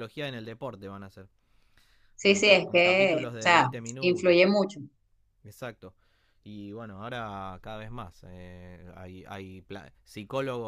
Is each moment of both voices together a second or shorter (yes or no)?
no